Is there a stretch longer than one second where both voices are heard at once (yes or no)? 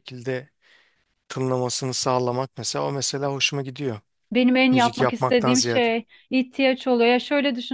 yes